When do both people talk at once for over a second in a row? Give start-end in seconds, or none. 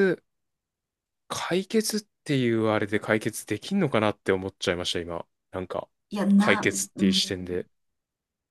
6.4-7.6